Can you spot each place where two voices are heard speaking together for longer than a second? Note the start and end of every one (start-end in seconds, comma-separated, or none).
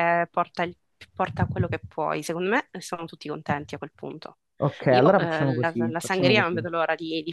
4.9-6.6